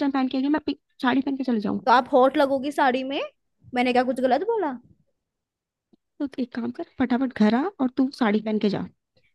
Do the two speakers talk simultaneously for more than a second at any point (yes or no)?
no